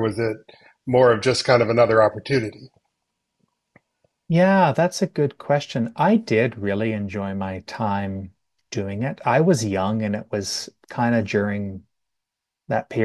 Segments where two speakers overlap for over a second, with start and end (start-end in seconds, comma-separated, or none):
none